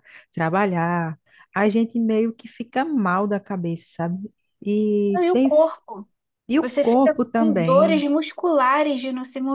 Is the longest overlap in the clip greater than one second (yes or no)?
yes